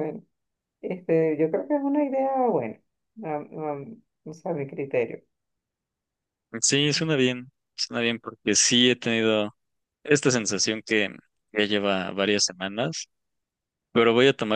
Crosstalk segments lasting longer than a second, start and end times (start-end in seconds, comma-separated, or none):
none